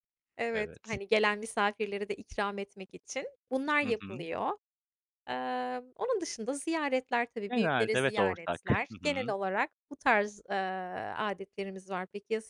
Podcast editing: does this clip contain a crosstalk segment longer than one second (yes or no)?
yes